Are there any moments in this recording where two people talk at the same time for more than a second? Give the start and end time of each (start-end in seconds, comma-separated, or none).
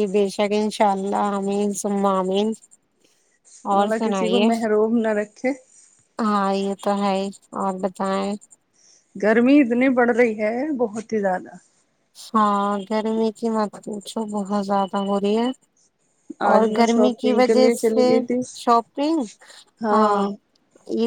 16.5-18.1